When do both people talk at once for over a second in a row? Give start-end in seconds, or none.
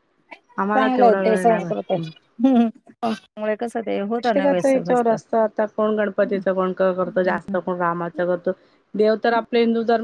none